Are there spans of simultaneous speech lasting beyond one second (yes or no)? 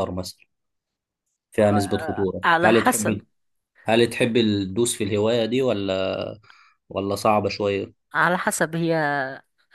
yes